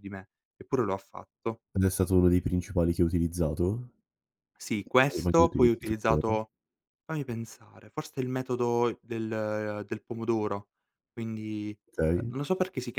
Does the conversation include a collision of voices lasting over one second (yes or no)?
yes